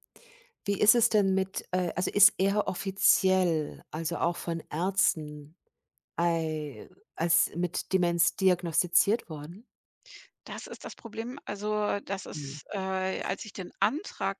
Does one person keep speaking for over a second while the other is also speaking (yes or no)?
no